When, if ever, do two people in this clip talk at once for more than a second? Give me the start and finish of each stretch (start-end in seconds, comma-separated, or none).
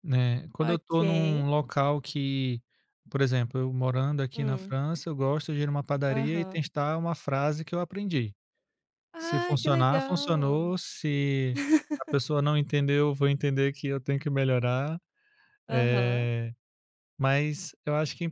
9.2-10.7